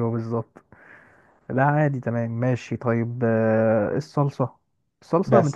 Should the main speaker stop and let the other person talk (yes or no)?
no